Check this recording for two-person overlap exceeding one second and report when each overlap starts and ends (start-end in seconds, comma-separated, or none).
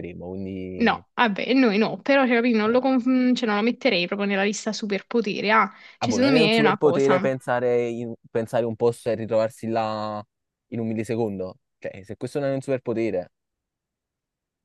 6.0-7.2